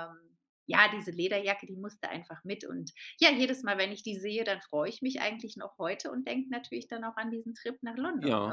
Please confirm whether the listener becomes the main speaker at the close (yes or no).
yes